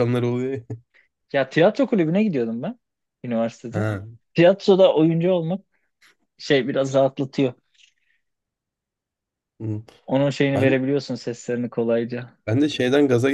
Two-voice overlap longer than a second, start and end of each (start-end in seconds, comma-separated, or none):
none